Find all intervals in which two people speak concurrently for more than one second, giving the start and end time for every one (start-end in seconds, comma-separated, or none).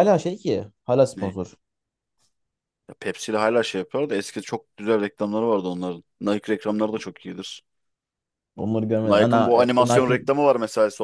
9.0-10.3